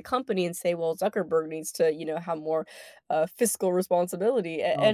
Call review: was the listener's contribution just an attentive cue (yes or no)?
yes